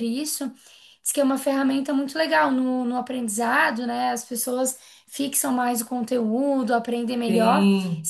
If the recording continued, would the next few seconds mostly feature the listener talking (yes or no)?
no